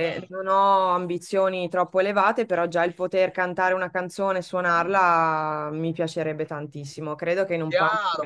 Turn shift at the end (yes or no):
yes